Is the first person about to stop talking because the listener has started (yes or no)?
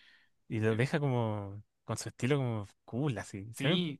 yes